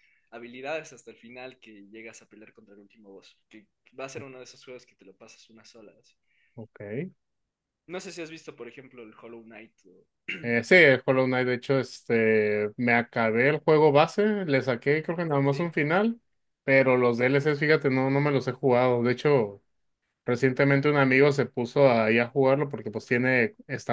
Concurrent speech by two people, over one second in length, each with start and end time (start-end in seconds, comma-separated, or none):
none